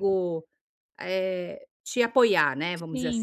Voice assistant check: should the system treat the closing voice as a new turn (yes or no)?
yes